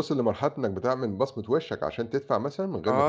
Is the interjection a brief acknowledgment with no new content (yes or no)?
no